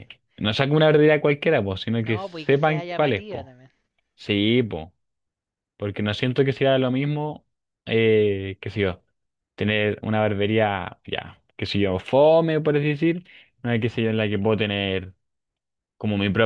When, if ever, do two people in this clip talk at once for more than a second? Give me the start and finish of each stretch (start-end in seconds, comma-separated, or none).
2.0-3.5